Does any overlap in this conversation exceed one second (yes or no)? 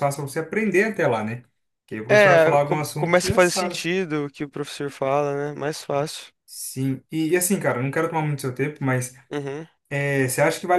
yes